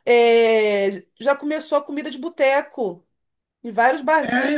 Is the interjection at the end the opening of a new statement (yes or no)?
yes